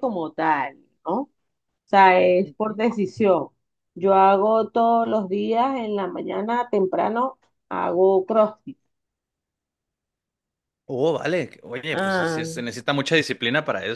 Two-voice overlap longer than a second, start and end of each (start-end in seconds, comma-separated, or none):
none